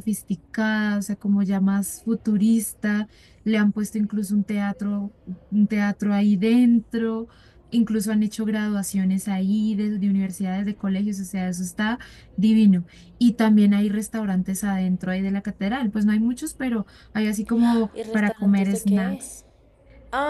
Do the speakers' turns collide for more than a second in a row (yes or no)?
yes